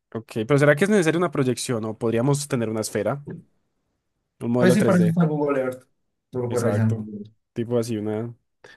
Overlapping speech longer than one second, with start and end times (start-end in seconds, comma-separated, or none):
none